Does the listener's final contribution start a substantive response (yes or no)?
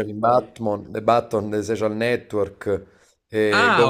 yes